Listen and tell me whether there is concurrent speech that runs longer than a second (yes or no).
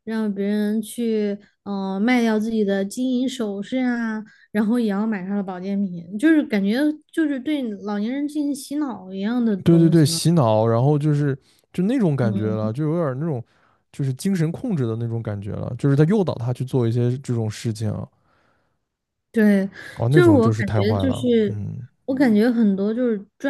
yes